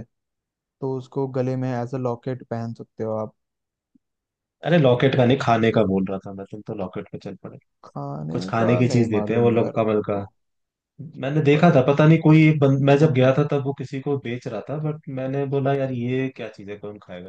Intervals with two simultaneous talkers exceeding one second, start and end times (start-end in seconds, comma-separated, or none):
8.3-10.2